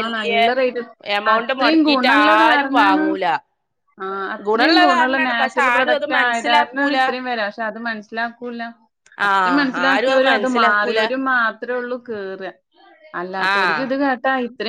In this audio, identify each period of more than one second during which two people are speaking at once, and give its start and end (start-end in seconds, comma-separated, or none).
4.5-7.0, 9.3-11.0